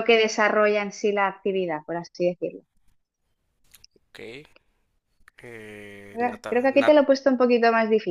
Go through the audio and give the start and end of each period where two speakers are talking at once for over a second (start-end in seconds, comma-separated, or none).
none